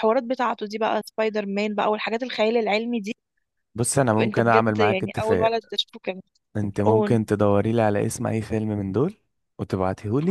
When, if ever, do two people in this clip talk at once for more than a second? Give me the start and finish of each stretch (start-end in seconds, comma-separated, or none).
4.2-5.5